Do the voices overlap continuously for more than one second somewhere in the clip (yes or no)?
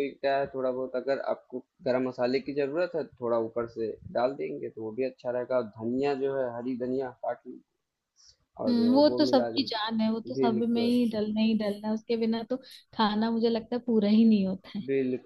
yes